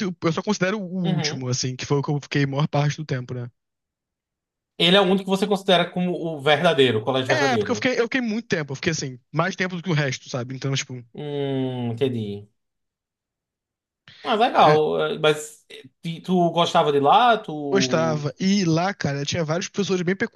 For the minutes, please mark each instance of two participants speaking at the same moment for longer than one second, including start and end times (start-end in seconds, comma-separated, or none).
none